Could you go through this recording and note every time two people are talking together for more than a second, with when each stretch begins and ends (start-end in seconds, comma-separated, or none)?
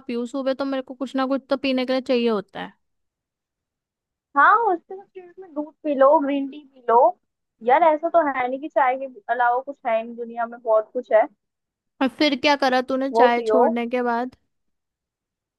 none